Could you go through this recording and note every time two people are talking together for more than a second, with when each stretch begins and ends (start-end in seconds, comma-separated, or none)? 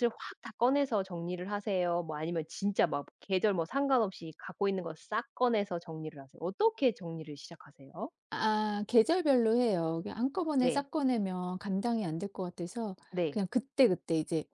none